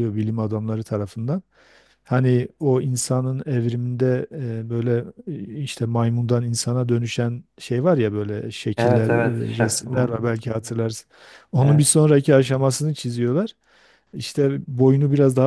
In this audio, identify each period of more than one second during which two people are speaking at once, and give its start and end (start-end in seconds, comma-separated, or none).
8.8-10.2